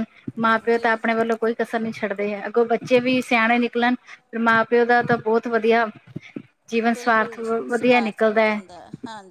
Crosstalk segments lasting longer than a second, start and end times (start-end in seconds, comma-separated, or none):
6.9-8.6